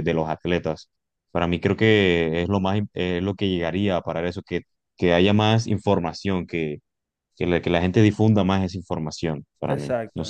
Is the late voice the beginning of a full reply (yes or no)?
yes